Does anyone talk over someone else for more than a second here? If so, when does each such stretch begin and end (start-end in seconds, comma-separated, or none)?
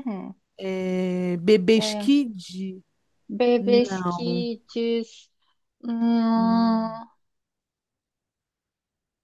none